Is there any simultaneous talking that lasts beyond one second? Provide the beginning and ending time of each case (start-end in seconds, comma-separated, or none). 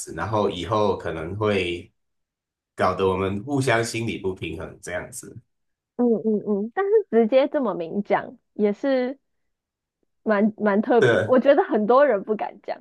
none